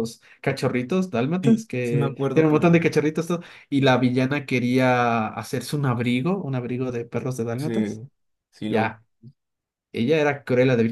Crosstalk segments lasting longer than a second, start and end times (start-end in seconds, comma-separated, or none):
1.4-2.8